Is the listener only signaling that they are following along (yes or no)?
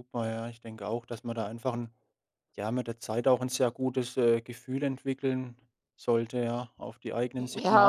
no